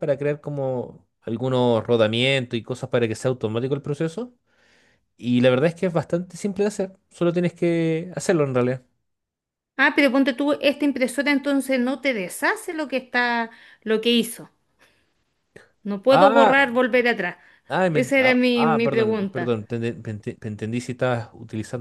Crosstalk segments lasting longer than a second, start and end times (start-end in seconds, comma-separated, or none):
17.9-19.4